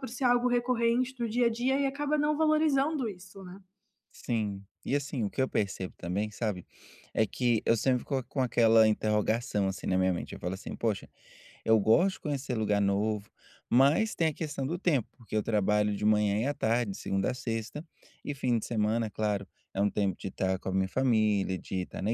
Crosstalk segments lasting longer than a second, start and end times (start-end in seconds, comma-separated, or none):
none